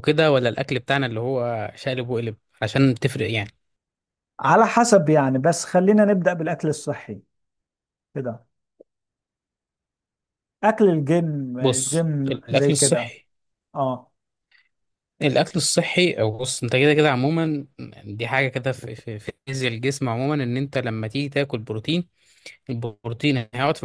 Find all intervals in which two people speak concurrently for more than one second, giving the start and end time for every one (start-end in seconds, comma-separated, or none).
11.6-13.1